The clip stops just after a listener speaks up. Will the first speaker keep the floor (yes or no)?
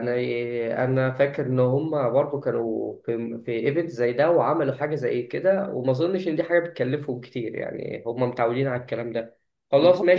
yes